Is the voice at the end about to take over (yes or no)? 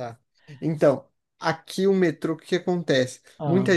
no